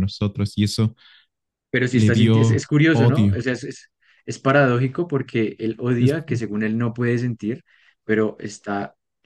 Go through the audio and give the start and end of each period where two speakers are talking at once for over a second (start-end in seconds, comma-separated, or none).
1.9-3.5